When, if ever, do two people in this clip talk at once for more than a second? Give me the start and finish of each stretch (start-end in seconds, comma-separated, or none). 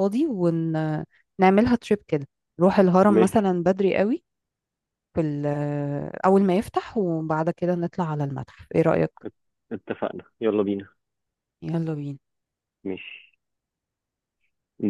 none